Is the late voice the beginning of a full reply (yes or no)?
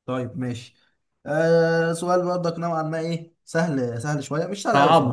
yes